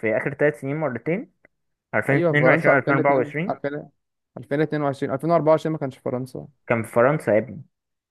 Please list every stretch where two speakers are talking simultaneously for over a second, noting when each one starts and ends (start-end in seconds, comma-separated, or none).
2.1-3.6